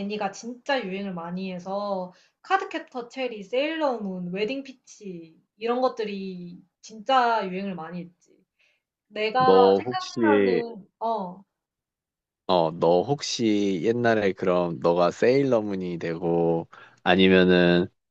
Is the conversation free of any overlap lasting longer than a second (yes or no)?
no